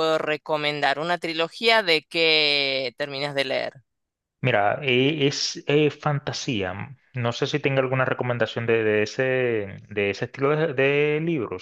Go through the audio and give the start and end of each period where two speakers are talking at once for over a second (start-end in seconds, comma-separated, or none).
none